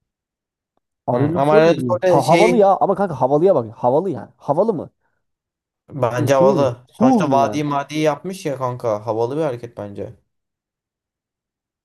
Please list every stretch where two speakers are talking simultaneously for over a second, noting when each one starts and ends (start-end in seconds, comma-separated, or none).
1.1-2.7, 6.2-7.6